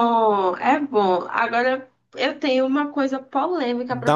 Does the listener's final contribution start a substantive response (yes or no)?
yes